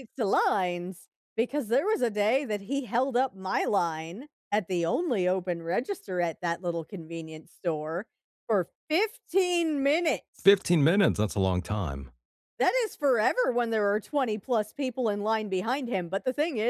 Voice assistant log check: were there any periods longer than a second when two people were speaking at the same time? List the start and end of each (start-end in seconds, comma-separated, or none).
none